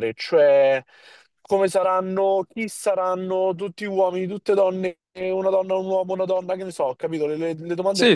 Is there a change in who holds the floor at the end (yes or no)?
yes